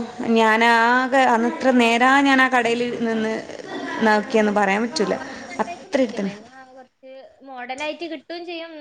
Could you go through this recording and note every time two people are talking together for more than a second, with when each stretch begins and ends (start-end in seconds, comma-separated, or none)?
none